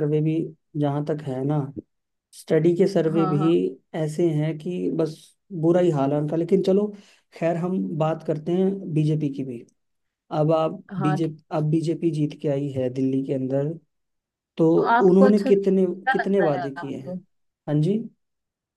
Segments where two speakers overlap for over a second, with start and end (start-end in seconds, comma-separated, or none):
15.1-17.1